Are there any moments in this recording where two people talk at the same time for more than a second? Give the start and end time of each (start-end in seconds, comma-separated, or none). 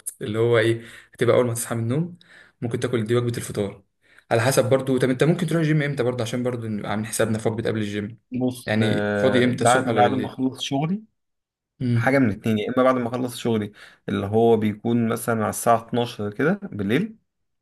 8.7-10.4